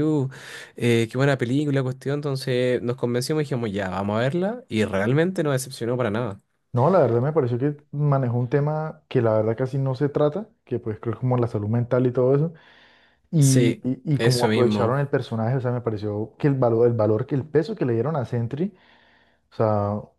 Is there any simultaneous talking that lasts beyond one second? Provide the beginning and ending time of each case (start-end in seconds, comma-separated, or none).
13.4-15.0